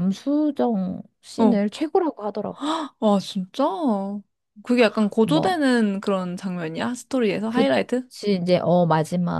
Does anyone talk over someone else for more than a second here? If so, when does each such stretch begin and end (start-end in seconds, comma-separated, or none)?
none